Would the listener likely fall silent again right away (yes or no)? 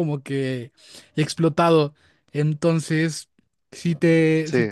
yes